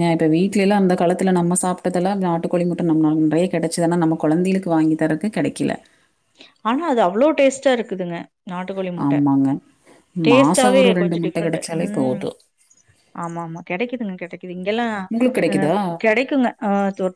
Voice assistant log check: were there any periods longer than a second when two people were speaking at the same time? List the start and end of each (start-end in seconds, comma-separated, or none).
10.3-12.2